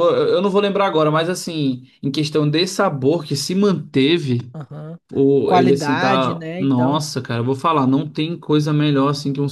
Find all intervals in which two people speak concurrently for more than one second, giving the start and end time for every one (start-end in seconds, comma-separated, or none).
5.5-7.0